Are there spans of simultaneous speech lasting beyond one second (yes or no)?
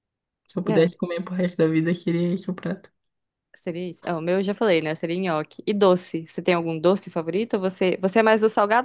no